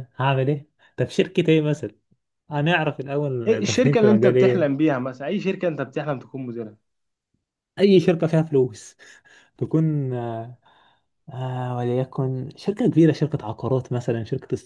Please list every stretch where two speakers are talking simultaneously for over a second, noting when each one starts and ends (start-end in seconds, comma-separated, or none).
3.5-4.7